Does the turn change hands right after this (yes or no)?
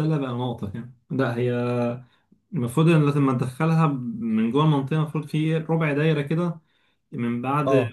no